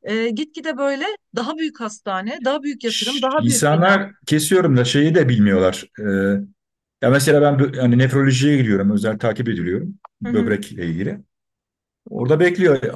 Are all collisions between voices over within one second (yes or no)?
no